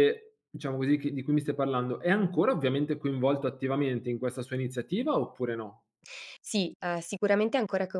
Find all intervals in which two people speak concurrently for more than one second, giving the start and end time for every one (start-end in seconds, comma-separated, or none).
none